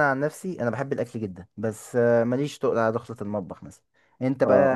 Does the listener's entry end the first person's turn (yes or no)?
yes